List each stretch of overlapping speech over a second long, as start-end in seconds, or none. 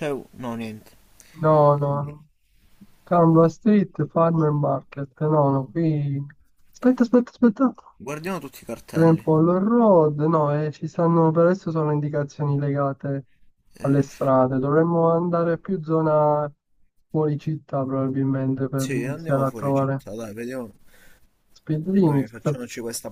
18.7-20.0